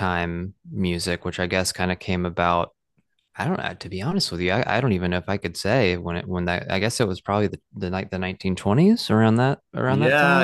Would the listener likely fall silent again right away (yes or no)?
no